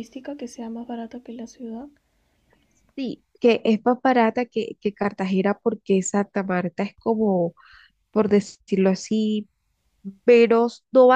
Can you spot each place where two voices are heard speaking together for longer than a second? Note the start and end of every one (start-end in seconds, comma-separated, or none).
none